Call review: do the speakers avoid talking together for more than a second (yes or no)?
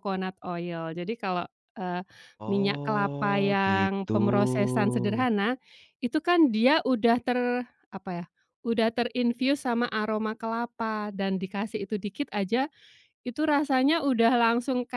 no